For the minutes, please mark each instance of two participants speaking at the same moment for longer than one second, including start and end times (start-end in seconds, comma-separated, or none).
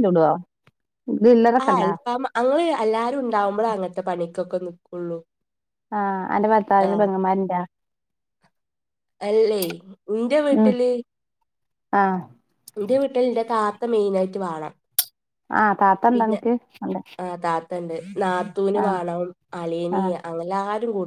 none